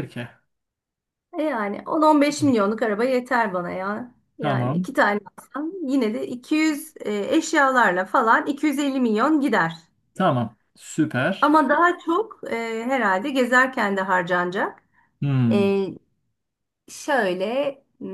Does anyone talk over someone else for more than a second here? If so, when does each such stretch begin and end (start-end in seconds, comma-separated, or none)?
none